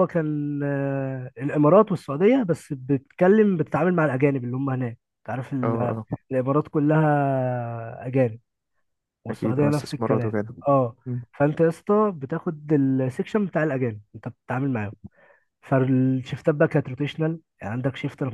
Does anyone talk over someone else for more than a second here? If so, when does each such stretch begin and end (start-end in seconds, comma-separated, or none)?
9.3-10.6